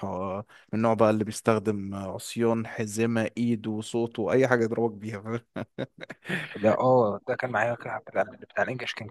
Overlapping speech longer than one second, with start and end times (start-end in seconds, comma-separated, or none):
none